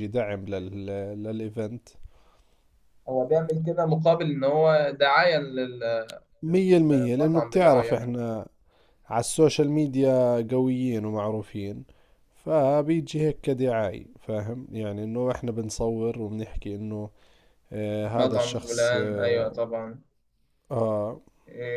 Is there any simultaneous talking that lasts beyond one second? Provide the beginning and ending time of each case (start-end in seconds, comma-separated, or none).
6.4-8.2, 18.1-19.5